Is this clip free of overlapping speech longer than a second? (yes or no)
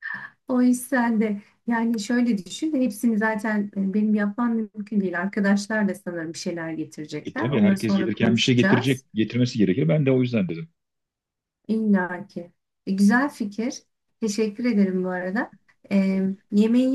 no